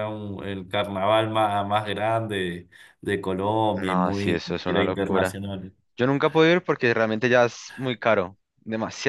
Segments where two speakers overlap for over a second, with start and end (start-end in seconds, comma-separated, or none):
3.8-5.4